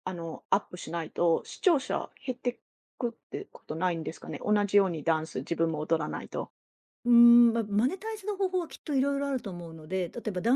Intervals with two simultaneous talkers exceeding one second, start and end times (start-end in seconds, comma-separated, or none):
none